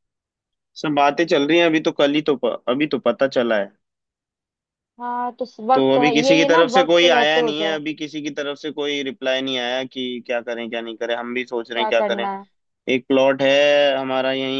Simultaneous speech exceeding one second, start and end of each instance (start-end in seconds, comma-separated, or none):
5.7-7.8